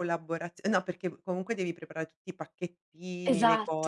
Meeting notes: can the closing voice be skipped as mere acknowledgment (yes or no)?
yes